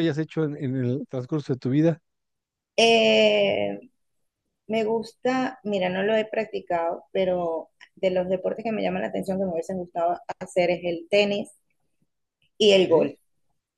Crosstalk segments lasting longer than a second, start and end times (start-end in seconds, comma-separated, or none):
none